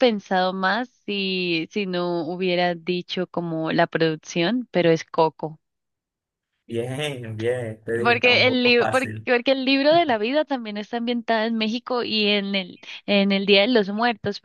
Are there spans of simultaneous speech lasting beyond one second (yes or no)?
yes